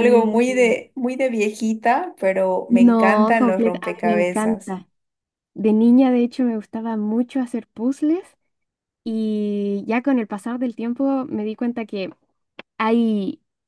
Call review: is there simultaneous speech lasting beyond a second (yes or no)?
yes